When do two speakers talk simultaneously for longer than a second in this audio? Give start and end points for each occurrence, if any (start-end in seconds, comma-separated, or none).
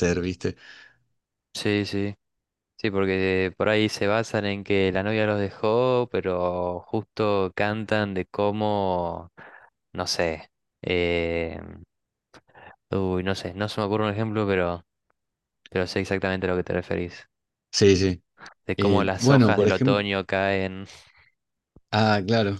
18.8-20.0